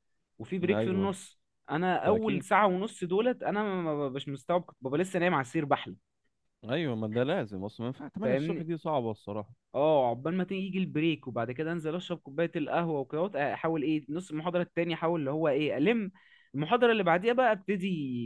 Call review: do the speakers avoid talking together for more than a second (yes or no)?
yes